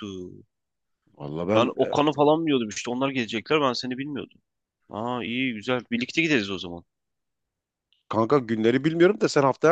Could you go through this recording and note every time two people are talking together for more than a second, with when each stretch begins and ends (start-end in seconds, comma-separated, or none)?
none